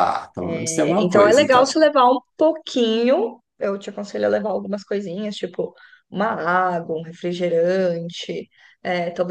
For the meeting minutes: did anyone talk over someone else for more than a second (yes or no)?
yes